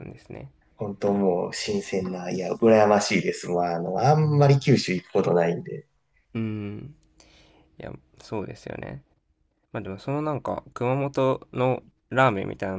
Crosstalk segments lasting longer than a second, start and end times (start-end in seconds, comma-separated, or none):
none